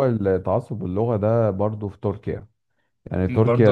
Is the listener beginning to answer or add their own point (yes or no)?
no